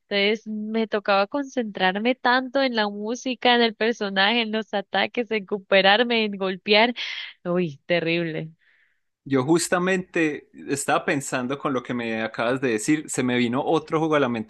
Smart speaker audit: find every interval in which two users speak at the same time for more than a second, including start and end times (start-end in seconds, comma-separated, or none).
none